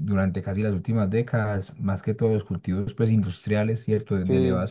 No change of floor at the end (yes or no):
yes